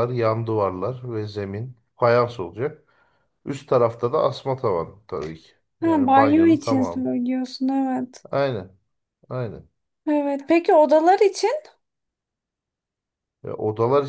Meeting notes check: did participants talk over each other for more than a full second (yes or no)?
yes